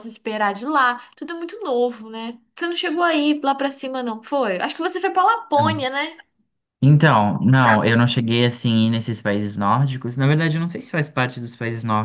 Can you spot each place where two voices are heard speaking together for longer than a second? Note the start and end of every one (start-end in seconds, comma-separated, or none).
none